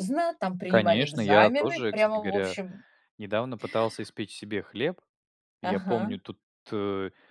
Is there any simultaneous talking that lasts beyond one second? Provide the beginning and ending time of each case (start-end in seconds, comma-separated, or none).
0.7-2.6